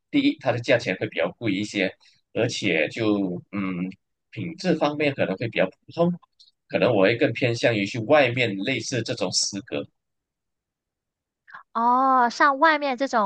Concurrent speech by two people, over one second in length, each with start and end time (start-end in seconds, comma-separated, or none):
none